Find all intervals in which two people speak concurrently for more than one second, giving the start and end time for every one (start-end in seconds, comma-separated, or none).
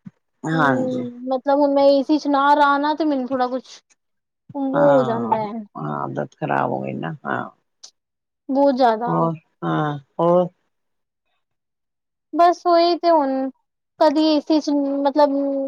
none